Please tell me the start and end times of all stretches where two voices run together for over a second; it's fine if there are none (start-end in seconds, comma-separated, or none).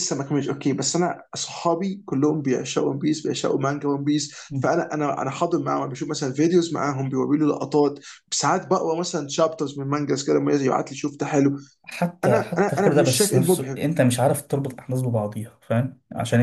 12.2-13.8